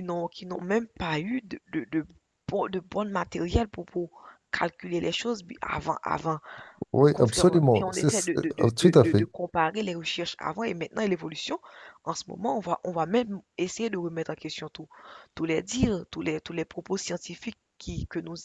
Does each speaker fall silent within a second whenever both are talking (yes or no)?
no